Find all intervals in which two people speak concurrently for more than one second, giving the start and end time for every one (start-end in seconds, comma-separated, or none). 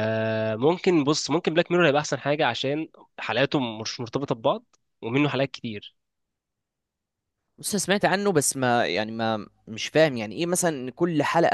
none